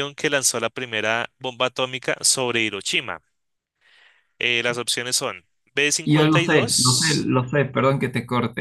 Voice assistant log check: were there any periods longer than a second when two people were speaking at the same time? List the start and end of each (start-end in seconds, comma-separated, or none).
6.1-7.3